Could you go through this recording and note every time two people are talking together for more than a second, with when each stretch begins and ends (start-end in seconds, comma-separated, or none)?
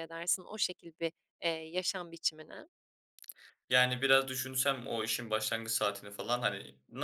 none